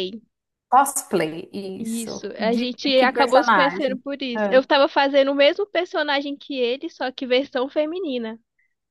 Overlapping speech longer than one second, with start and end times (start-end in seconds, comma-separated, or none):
1.8-4.6